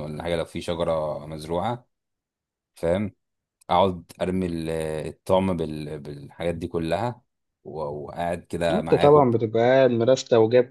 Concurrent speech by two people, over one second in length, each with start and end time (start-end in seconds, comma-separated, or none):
none